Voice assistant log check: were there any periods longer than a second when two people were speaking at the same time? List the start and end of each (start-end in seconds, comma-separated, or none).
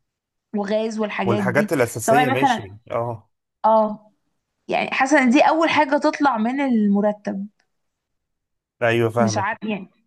1.2-2.8